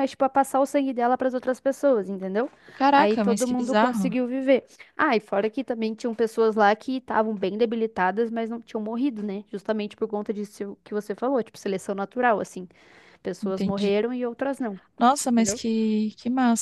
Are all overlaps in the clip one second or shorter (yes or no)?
no